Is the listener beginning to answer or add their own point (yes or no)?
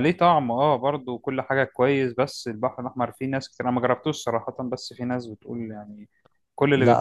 yes